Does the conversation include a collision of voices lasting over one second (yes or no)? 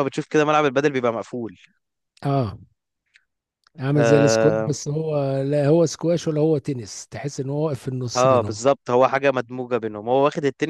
no